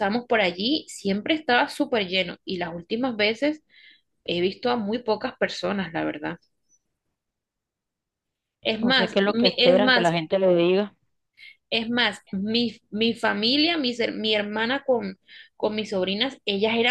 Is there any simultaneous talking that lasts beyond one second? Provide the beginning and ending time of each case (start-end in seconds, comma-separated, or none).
8.8-10.1